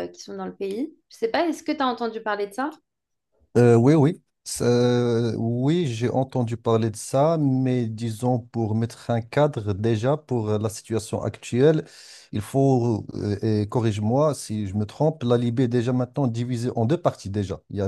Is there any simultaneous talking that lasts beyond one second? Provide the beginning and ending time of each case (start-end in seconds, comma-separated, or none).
none